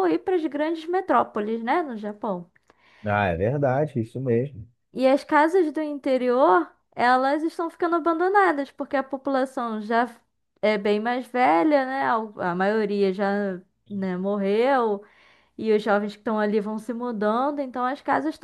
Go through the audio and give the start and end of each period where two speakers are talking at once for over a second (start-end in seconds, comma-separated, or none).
none